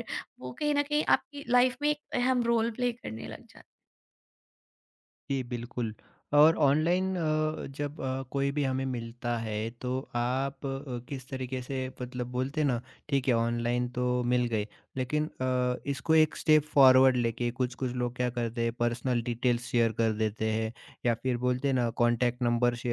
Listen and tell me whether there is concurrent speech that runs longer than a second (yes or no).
no